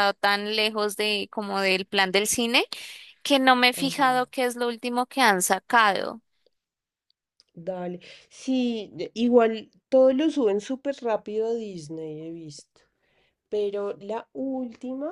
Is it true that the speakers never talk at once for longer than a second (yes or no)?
yes